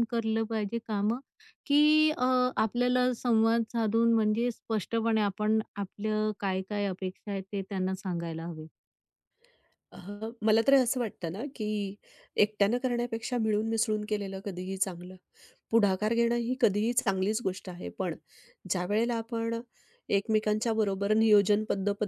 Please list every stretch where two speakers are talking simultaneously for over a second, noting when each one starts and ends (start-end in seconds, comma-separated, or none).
none